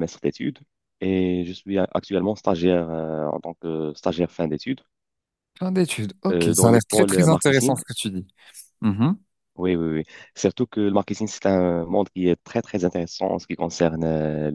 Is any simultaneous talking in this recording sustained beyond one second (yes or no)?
yes